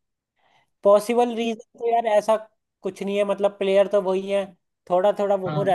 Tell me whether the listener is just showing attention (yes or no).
yes